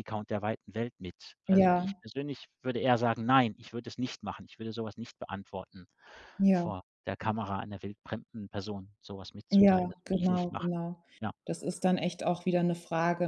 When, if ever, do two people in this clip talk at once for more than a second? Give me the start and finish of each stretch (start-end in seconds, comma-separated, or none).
9.5-10.8